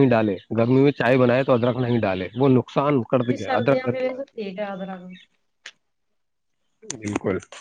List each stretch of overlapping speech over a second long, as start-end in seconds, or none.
3.3-5.0